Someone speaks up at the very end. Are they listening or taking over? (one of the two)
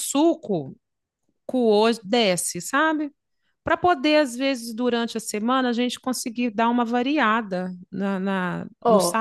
taking over